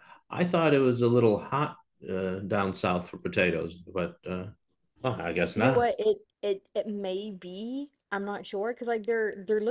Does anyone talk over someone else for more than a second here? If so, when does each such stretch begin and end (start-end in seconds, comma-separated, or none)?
none